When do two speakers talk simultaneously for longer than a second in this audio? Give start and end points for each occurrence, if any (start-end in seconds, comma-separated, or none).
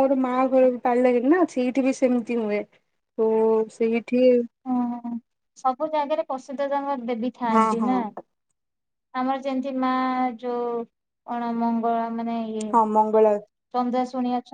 none